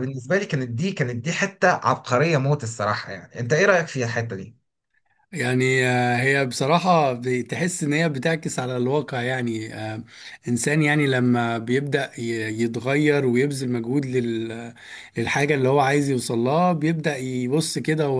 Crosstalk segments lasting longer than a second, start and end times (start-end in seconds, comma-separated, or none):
none